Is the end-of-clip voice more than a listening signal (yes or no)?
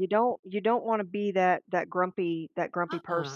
yes